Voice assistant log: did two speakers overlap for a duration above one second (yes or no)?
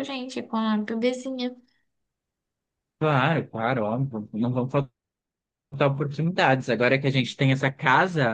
no